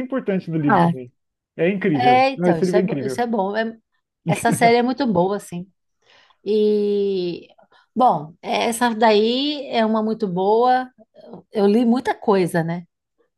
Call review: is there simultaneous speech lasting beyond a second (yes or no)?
yes